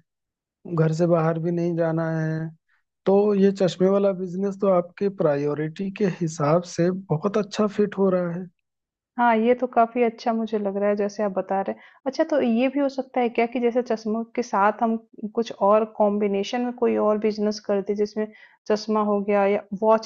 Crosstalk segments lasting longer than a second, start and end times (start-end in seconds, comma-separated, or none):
none